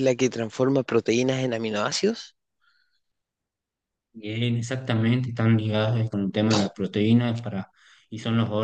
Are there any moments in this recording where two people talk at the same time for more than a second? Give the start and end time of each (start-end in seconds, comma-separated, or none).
none